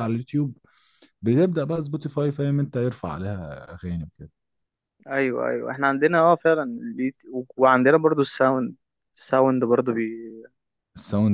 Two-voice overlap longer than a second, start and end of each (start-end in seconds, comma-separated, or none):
none